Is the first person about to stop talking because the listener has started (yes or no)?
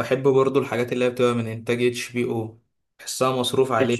yes